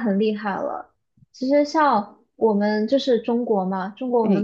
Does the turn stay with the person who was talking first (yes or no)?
yes